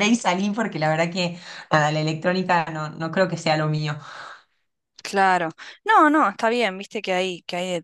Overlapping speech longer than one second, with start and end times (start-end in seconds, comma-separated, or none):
none